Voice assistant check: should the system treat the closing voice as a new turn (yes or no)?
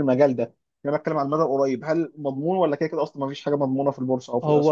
yes